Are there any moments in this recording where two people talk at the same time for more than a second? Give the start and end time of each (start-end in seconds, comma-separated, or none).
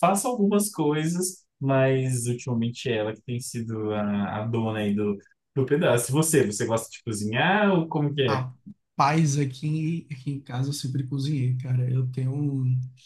none